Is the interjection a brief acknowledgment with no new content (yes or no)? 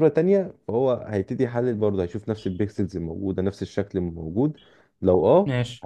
yes